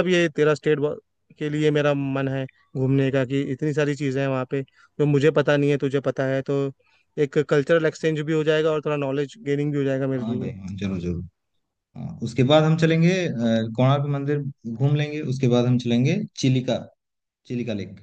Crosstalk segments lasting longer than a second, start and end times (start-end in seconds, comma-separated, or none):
none